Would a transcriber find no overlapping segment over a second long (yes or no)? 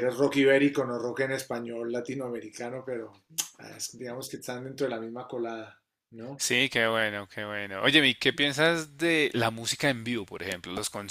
yes